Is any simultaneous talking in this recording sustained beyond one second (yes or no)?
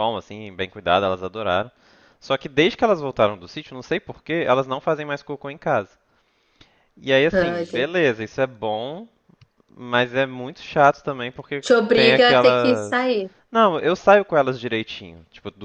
yes